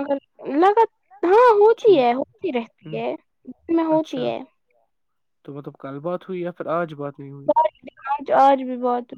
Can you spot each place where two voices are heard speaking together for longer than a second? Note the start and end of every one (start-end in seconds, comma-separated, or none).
none